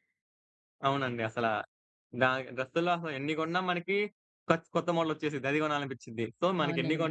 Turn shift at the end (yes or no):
no